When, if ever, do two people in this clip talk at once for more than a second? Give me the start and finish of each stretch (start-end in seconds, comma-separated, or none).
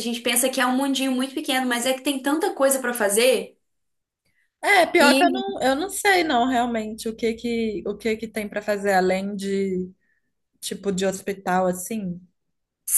none